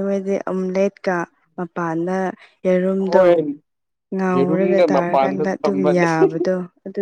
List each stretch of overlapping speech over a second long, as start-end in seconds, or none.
4.3-6.1